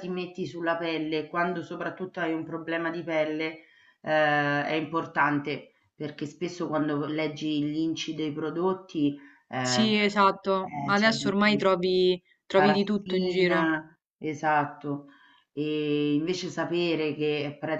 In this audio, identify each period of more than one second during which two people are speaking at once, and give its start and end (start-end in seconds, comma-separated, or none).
9.6-11.7, 12.5-13.8